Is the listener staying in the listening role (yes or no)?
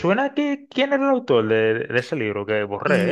no